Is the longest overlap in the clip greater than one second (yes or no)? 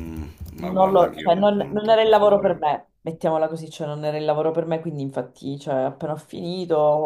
yes